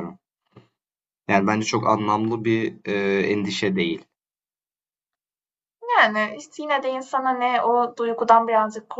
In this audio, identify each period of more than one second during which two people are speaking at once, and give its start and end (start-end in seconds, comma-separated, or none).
none